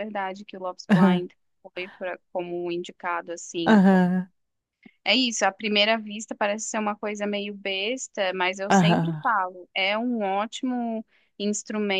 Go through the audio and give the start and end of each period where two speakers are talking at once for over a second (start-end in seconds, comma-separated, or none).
none